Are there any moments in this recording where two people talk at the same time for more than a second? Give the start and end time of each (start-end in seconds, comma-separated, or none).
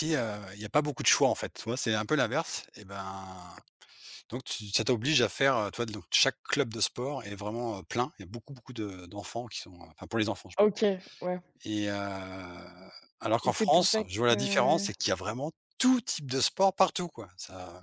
13.4-14.9